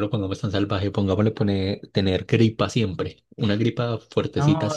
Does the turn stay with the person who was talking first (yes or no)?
no